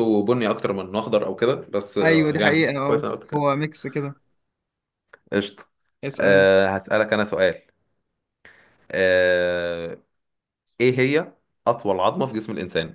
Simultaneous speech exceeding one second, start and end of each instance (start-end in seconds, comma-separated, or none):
2.0-3.5